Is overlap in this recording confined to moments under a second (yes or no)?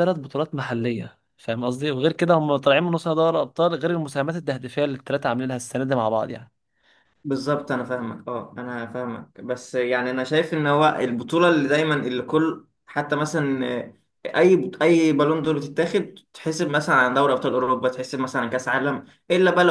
yes